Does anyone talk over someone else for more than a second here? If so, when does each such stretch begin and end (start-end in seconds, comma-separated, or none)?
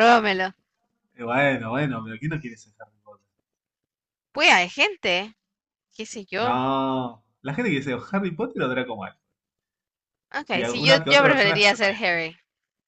10.5-12.0